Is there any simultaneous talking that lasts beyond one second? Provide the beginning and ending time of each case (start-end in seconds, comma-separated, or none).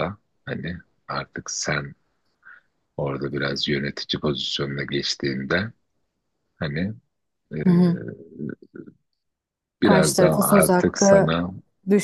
9.8-11.4